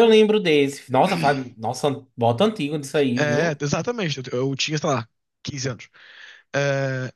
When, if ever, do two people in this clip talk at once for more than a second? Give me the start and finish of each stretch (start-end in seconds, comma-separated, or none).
none